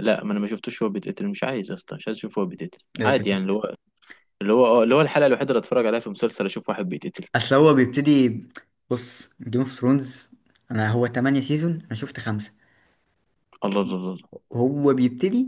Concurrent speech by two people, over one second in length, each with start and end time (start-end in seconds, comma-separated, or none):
none